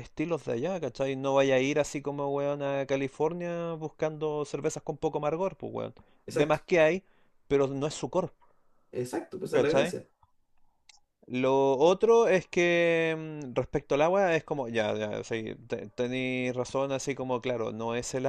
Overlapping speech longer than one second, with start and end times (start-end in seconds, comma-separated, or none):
none